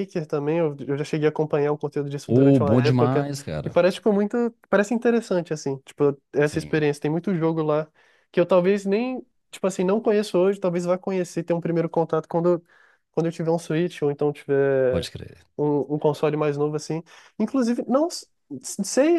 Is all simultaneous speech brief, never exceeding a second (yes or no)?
no